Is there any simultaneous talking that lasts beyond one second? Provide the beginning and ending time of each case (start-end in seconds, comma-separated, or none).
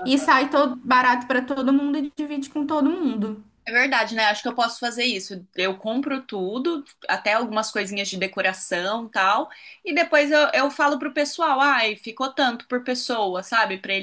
none